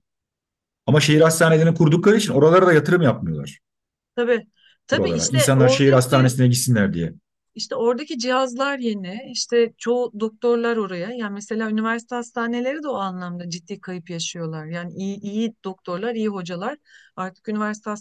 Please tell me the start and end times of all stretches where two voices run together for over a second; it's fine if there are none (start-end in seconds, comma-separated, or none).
4.9-6.3